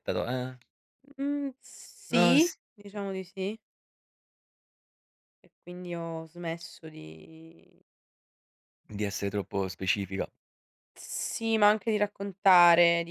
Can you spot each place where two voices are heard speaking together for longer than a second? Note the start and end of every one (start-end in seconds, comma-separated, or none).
none